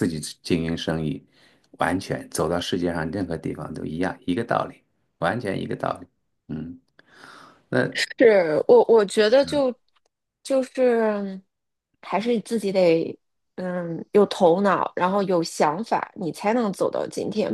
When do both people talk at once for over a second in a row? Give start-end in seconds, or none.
none